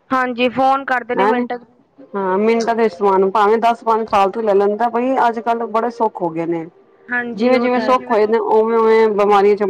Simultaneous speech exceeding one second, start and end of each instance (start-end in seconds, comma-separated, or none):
7.3-9.1